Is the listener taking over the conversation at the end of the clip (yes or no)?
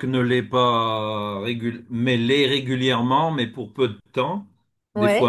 no